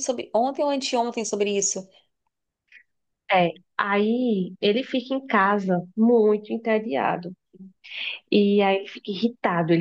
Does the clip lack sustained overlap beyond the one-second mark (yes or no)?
yes